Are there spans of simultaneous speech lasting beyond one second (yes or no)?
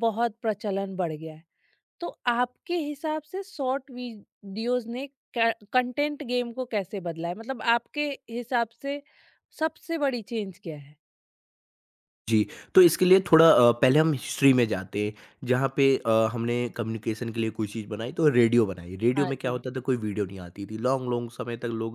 no